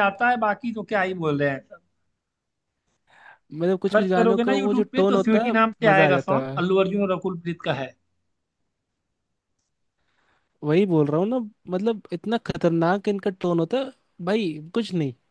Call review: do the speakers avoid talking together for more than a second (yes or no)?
no